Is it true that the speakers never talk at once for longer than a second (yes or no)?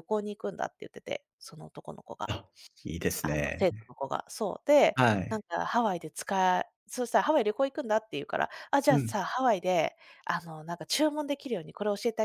yes